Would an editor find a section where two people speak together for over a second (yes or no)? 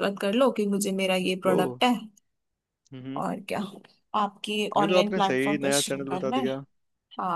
yes